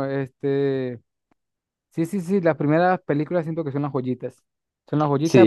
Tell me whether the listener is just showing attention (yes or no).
yes